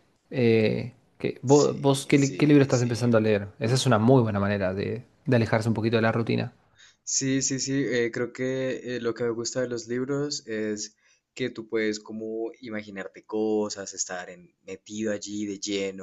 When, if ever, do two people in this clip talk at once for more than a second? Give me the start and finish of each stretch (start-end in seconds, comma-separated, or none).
1.5-2.9